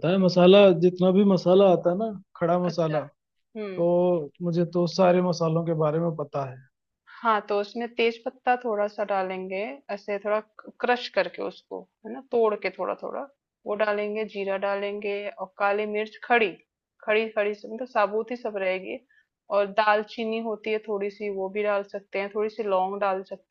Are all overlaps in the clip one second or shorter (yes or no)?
yes